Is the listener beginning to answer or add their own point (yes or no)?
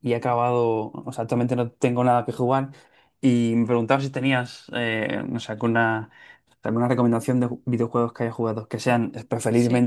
no